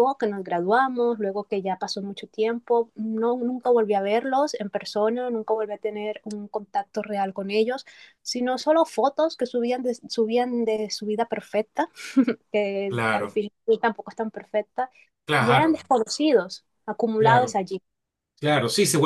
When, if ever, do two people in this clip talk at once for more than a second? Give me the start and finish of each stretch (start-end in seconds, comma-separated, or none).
none